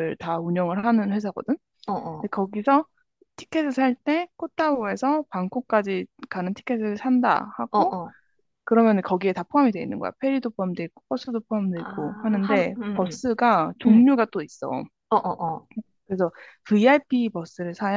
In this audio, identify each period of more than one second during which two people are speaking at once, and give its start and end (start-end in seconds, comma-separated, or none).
11.7-13.2